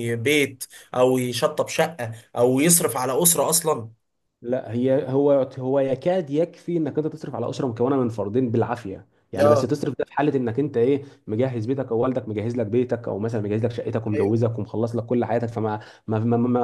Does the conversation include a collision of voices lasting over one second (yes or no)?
no